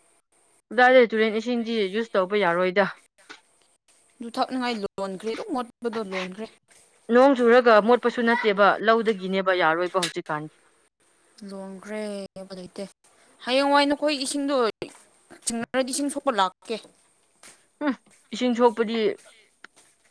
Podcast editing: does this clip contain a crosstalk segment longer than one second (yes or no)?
no